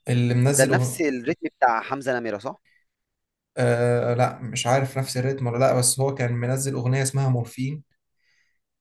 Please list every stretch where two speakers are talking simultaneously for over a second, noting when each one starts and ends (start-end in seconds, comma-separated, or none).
none